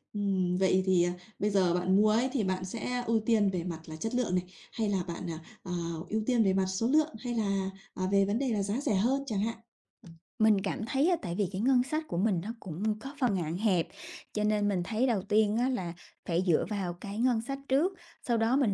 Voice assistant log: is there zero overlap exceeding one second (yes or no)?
yes